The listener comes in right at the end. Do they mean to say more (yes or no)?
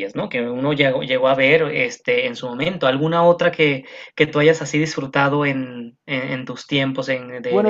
yes